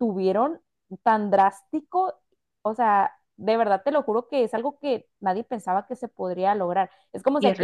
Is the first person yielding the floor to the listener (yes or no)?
no